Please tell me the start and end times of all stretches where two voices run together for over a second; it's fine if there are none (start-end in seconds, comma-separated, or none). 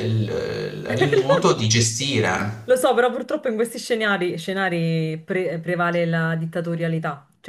none